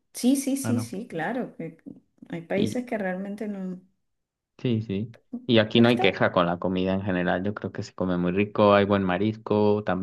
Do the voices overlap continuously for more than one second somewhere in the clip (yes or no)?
no